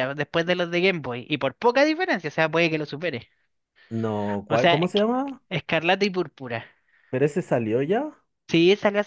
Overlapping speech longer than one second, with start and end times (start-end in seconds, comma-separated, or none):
none